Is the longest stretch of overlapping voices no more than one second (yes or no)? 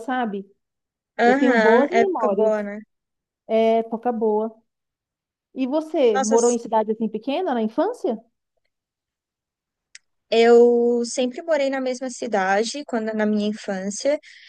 no